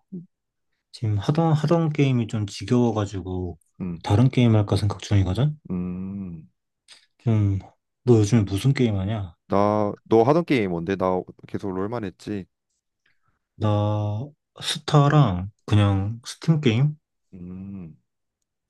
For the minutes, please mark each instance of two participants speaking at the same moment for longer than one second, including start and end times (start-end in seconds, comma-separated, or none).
none